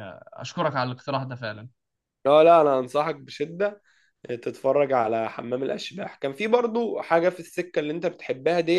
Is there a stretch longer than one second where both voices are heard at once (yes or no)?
no